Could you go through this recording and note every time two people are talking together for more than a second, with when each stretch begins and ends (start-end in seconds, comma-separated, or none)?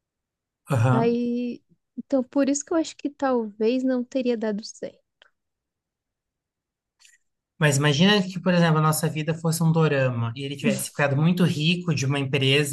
none